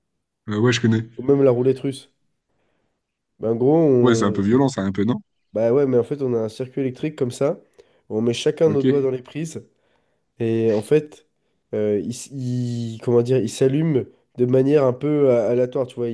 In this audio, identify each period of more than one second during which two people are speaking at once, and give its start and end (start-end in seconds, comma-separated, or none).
none